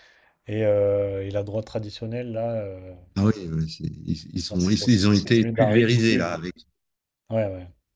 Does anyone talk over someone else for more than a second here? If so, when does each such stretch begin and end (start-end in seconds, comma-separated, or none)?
4.3-6.2